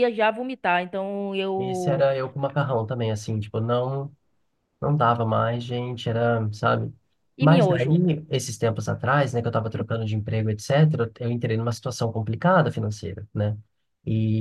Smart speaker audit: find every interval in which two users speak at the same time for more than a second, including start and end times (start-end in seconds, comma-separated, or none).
none